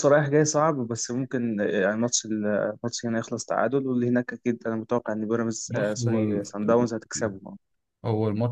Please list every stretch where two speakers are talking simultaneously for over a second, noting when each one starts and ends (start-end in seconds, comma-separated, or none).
5.7-6.9